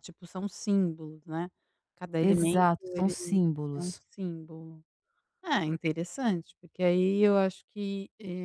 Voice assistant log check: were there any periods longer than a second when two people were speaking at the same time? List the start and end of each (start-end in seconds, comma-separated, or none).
2.2-4.0